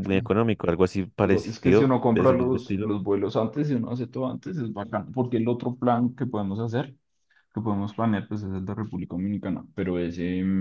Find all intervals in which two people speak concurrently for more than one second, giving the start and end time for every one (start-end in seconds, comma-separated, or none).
1.2-2.9